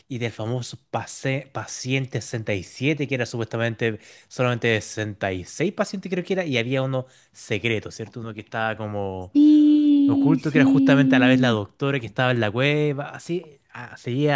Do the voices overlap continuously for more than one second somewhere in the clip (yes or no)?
yes